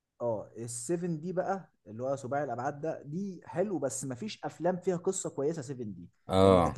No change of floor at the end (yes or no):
yes